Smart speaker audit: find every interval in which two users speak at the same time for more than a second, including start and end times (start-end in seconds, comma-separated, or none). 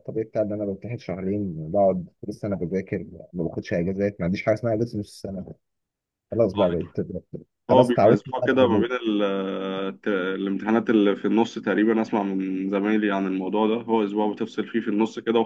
7.7-8.9